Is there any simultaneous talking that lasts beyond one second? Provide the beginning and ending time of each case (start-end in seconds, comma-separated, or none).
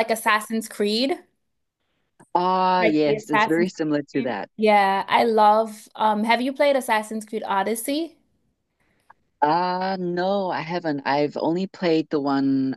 2.8-4.5